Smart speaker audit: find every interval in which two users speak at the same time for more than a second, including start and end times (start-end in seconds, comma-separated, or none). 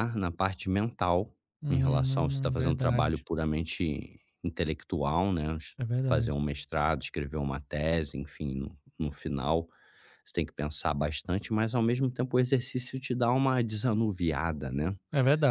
1.7-3.2